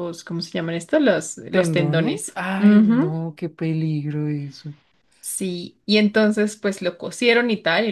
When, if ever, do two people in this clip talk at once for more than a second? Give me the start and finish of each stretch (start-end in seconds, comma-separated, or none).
1.5-3.2